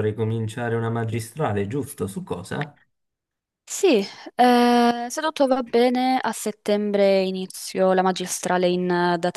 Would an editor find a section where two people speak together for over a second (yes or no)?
no